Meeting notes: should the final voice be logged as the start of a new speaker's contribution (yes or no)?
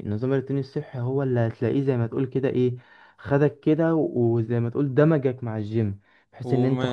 no